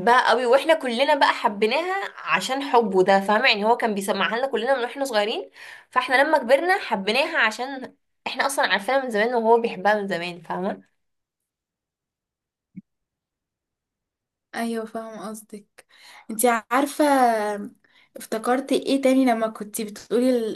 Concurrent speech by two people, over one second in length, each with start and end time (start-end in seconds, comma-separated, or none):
none